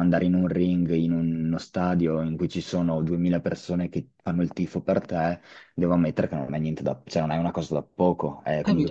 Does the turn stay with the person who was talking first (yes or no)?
no